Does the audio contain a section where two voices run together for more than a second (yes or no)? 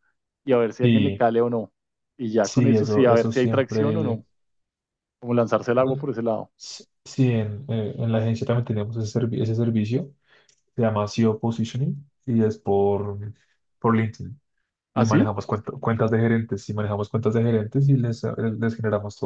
yes